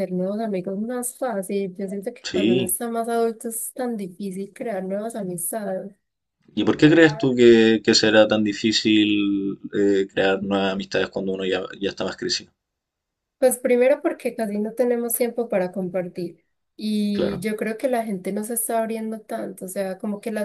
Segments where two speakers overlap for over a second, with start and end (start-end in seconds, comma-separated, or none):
none